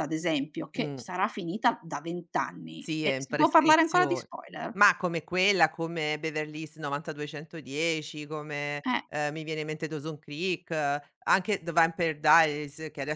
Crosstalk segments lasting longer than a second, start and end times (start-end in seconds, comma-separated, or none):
2.8-4.3